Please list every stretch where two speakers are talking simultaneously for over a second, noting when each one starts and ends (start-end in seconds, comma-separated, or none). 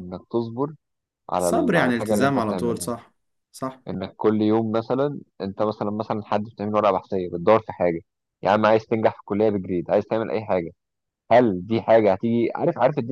1.4-2.9